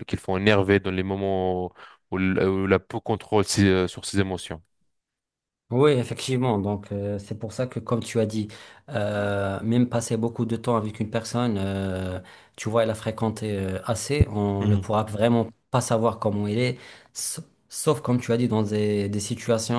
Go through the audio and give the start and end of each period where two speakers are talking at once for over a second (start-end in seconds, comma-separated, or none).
none